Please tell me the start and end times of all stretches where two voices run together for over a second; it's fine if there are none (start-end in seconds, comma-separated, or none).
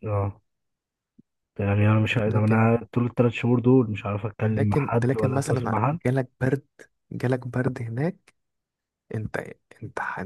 4.5-6.0